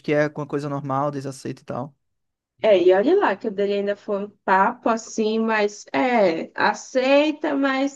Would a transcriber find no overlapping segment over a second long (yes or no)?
yes